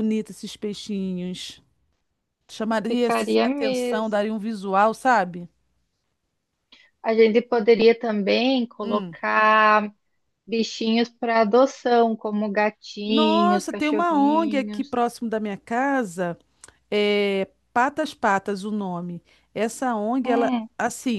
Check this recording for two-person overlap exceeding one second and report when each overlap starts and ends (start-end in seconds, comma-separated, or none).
2.9-4.2, 13.1-15.0